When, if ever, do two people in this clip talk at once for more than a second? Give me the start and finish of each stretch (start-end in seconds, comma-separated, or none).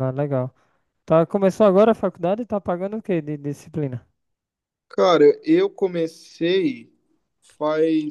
none